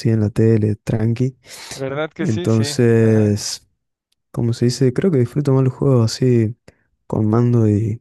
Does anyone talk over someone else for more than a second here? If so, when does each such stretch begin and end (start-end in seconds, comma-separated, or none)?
2.2-3.4